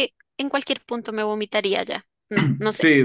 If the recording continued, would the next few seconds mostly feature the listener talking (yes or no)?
yes